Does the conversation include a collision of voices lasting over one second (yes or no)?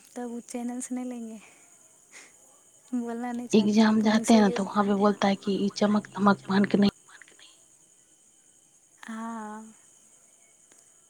yes